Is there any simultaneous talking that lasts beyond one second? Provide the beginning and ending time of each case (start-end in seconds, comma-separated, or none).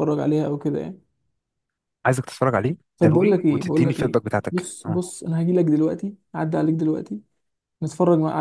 3.0-5.0